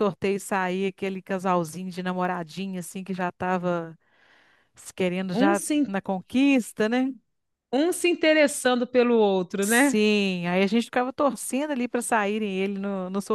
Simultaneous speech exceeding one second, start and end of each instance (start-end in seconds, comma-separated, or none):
none